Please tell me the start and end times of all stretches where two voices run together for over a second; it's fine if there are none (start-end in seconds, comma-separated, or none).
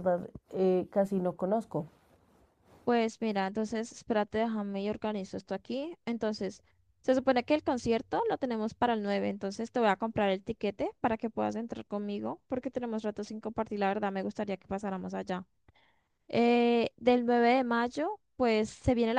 none